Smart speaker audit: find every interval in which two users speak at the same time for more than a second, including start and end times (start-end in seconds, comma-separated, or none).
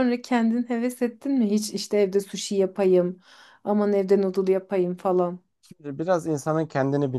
none